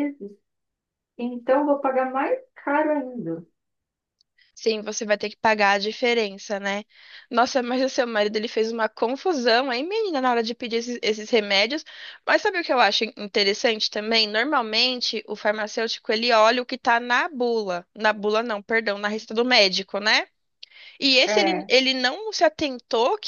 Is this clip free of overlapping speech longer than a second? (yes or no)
yes